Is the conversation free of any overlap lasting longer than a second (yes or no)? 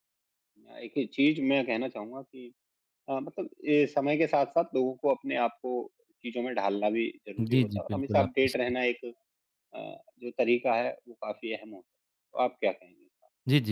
no